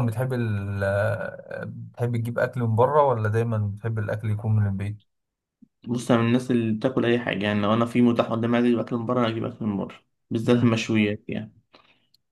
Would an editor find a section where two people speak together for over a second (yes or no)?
no